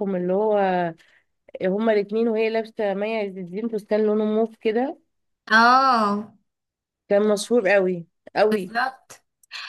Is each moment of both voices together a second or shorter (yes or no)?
yes